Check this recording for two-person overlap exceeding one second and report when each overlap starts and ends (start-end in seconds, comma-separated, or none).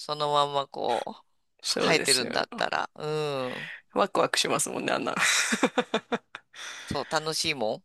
none